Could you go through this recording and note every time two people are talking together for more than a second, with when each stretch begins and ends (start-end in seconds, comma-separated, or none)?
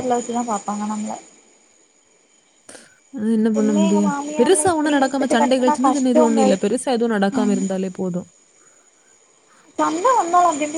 3.6-6.4